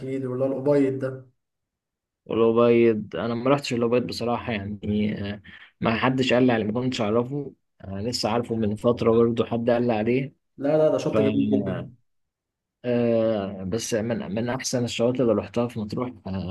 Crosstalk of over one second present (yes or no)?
no